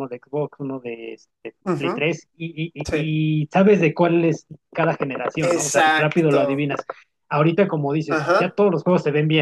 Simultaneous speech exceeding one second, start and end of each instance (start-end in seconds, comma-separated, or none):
5.4-6.7